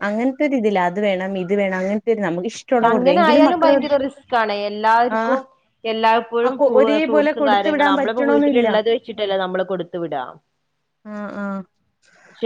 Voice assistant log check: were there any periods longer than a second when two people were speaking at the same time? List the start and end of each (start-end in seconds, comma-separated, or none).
6.5-8.7